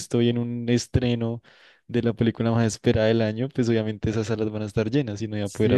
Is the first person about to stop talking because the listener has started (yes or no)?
yes